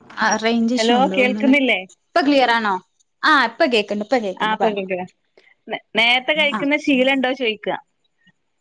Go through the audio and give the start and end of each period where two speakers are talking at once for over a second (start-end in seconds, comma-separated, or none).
none